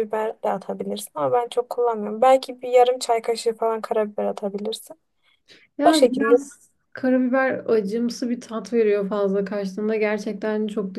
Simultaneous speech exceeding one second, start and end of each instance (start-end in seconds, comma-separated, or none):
none